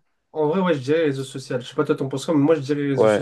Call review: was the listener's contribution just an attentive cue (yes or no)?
no